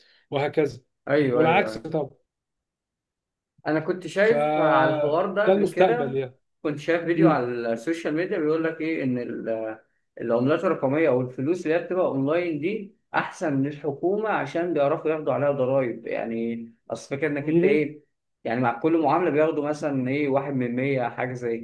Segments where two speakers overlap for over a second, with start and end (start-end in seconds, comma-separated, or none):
4.2-6.2